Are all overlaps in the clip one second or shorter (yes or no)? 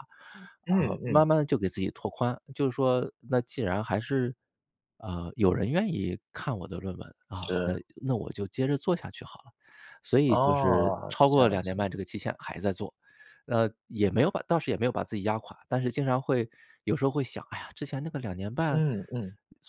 no